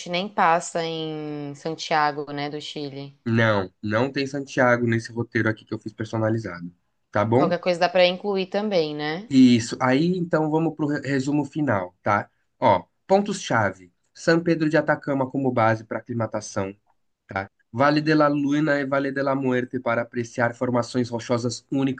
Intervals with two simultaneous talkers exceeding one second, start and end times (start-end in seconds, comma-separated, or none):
none